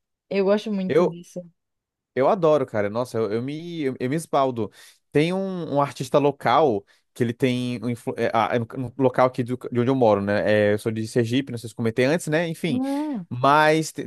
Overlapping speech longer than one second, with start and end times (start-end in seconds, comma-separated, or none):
none